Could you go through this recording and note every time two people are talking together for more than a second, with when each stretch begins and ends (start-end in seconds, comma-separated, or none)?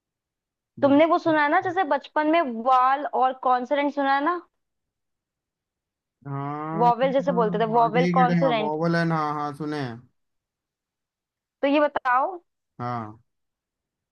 6.8-8.7